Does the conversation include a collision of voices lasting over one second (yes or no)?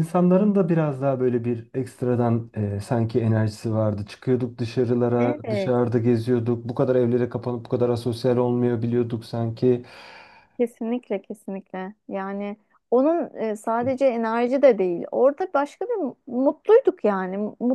no